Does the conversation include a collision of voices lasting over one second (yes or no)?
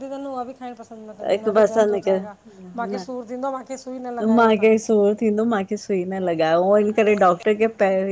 no